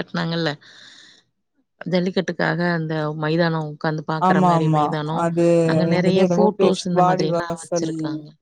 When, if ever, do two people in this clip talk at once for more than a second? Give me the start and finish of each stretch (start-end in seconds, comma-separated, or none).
5.9-7.9